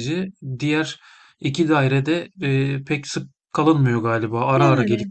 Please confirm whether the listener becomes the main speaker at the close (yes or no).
yes